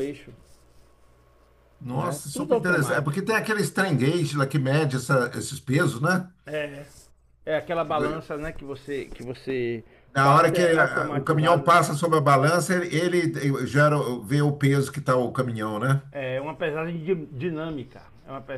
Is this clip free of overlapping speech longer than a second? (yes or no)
no